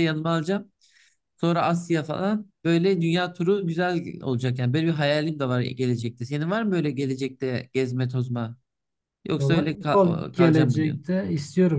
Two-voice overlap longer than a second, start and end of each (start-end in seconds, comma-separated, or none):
9.4-11.1